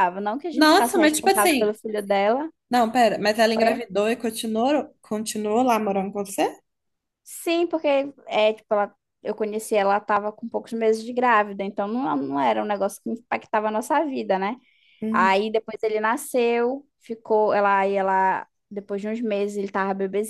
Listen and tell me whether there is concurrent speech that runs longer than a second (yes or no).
yes